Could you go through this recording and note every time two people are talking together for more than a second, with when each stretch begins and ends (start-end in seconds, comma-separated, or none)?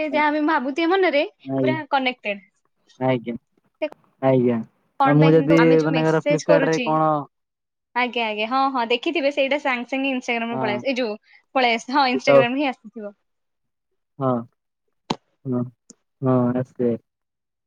5.0-6.9